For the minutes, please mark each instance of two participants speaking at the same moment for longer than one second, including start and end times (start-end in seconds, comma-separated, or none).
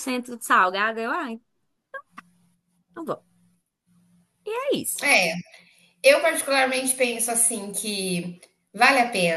none